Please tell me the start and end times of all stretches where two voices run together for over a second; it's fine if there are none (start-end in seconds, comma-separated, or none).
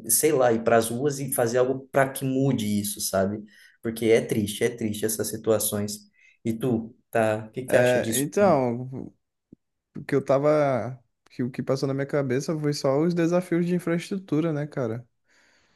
none